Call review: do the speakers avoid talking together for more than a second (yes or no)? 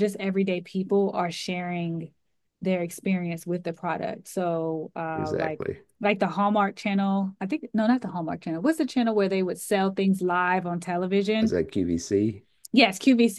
yes